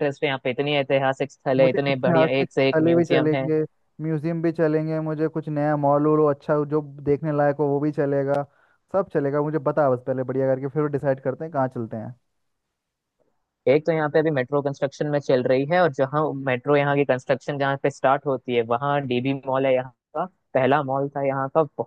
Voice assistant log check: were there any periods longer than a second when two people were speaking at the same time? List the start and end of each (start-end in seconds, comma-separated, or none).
1.6-3.5